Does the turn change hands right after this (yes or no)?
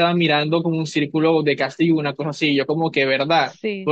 no